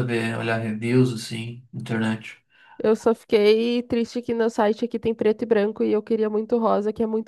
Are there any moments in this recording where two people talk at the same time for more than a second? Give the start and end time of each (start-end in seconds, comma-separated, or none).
none